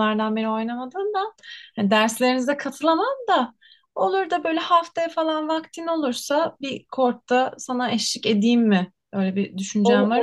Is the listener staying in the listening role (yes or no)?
no